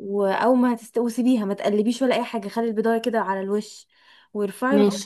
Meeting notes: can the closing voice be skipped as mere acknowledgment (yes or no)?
yes